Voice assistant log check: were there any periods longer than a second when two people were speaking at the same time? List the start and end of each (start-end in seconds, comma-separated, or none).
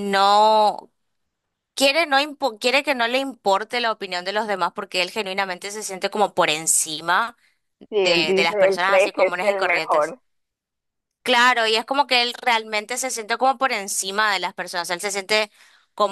8.0-10.1